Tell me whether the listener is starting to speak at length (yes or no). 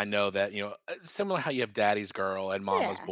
no